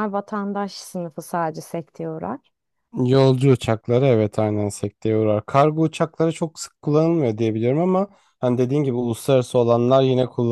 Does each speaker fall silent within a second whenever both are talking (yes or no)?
yes